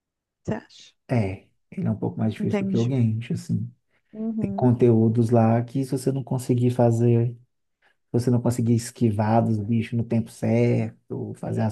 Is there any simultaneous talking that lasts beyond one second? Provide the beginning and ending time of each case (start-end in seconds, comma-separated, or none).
none